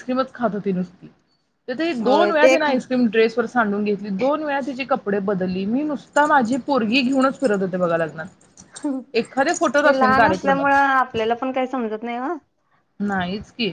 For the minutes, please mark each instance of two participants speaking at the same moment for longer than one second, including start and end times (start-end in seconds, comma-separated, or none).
9.1-10.7